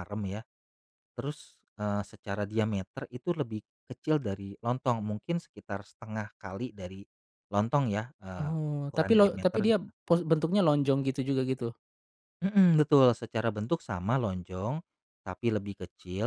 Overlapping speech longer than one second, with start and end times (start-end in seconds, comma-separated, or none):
8.3-9.9